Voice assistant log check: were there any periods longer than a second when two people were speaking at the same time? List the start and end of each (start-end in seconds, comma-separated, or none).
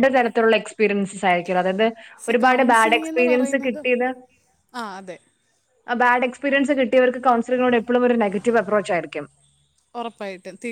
2.3-3.8